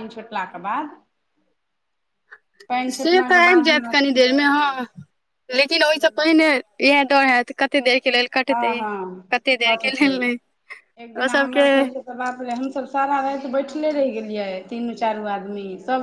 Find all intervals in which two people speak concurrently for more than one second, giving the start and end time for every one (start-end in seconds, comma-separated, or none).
2.9-4.9